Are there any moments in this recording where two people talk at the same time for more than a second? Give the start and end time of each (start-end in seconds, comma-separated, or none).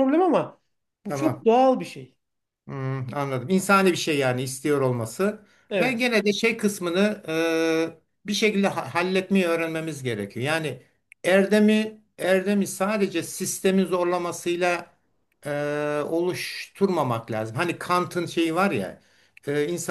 none